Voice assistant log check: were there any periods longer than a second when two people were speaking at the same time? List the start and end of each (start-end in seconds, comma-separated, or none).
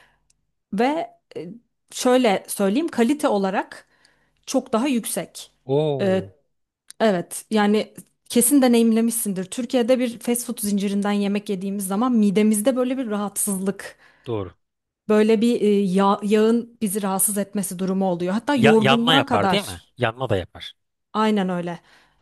18.5-19.9